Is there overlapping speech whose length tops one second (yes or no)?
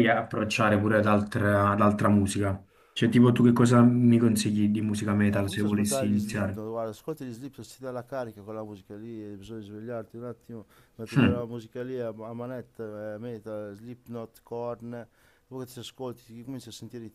yes